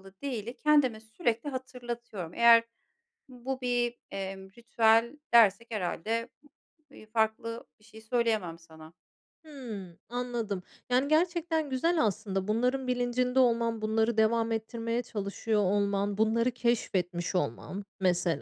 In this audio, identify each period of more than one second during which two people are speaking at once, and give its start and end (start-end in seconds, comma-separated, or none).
none